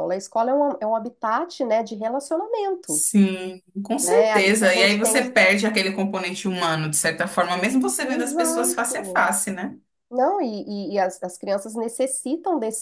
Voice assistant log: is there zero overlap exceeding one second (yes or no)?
no